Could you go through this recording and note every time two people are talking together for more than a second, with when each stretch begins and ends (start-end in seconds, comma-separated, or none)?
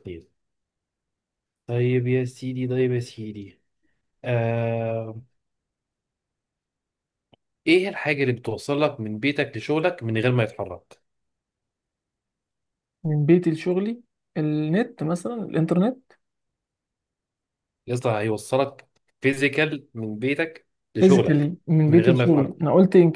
21.0-22.6